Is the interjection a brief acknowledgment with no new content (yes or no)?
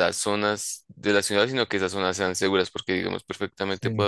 yes